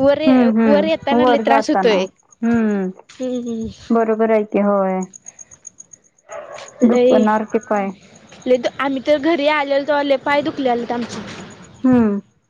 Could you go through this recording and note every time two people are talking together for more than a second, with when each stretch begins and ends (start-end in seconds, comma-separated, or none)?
0.7-1.9